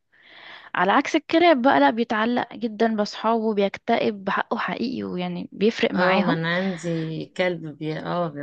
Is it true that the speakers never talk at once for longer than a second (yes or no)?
yes